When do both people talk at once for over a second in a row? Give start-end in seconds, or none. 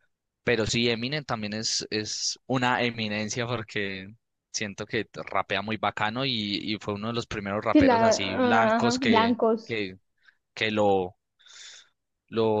7.7-9.8